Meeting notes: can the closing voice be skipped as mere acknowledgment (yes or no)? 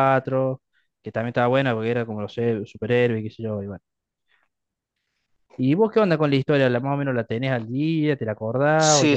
no